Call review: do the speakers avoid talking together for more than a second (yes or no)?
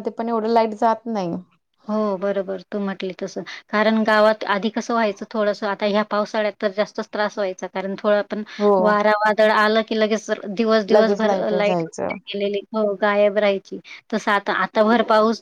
no